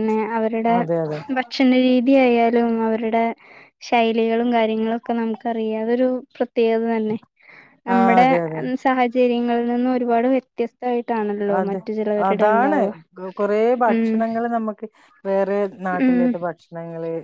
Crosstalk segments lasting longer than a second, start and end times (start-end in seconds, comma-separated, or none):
none